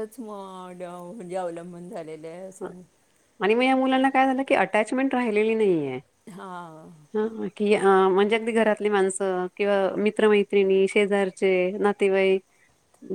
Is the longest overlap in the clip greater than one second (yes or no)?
no